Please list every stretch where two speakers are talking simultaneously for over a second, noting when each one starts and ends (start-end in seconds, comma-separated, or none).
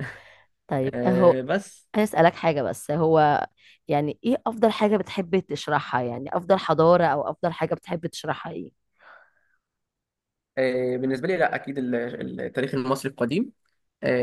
none